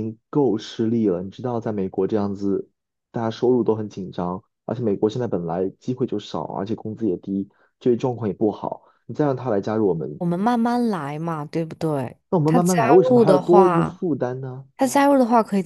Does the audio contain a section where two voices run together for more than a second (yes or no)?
yes